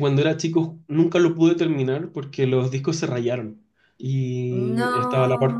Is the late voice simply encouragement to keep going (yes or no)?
yes